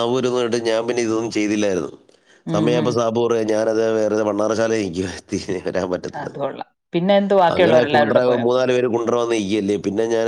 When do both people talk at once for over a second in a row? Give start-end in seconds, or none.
none